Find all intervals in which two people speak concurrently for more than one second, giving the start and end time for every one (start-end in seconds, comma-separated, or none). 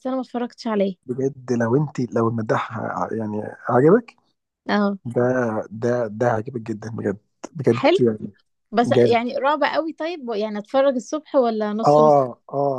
none